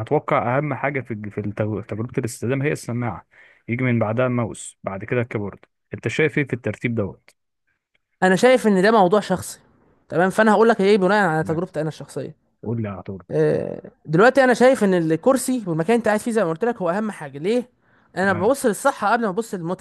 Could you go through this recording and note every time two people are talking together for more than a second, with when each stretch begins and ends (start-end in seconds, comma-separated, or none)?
none